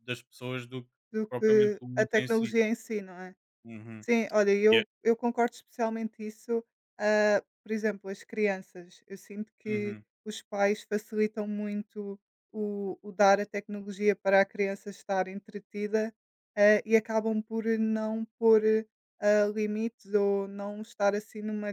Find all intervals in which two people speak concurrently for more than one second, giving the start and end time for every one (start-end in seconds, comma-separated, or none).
1.3-2.6